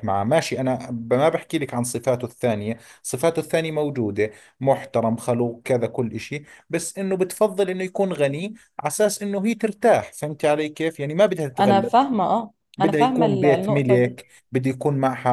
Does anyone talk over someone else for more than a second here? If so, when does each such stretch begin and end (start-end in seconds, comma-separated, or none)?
12.8-14.2